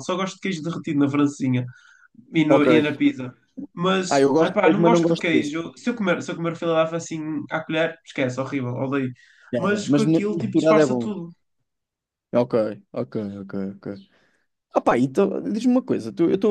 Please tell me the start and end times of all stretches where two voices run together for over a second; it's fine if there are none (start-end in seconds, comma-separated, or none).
4.1-5.5, 9.6-11.1